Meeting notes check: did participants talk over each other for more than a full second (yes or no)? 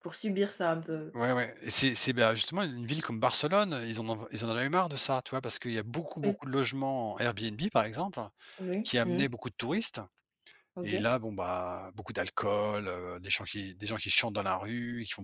no